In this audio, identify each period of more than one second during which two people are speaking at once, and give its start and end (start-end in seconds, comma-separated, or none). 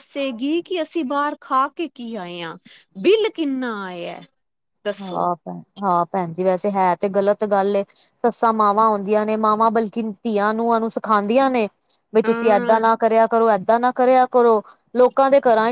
none